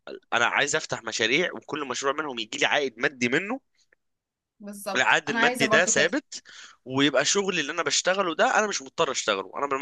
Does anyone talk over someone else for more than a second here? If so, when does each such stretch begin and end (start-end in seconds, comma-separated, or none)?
5.0-6.2